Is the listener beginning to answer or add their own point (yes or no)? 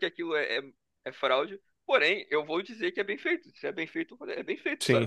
yes